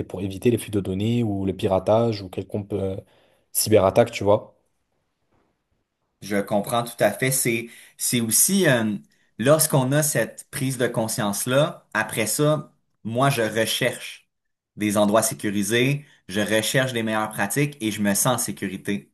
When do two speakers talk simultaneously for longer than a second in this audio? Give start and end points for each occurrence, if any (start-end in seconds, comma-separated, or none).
none